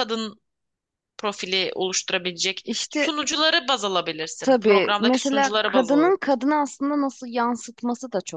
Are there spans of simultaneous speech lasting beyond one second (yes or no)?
yes